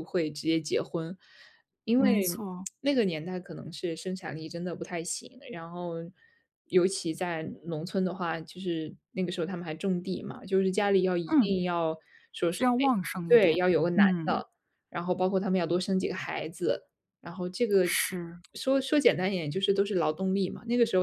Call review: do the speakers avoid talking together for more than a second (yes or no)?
no